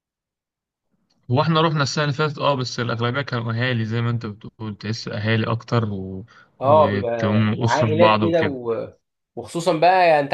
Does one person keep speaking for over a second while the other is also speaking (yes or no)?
yes